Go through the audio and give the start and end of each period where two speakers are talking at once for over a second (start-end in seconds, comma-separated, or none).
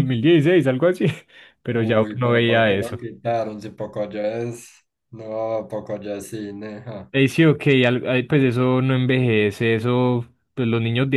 1.7-3.0